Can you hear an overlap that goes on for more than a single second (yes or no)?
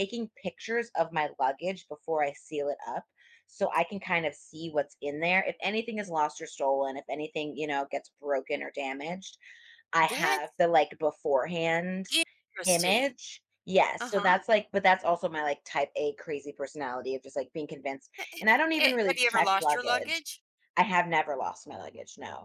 yes